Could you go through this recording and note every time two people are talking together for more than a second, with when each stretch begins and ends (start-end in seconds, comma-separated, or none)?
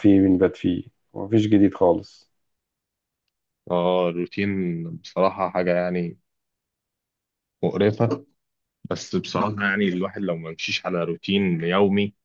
none